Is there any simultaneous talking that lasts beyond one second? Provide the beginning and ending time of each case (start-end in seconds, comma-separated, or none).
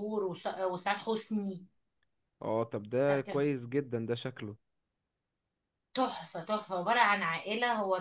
none